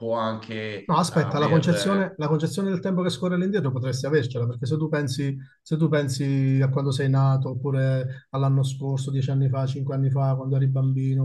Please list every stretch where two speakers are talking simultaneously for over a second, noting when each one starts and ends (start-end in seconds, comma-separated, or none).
0.8-2.1